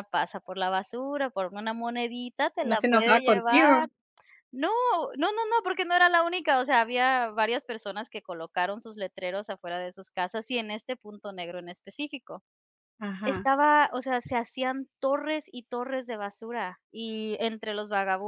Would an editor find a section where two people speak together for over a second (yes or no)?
yes